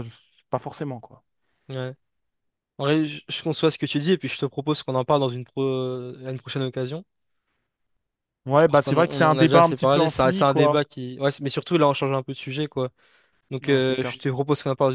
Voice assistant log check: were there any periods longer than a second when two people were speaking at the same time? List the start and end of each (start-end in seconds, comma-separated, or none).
8.5-10.8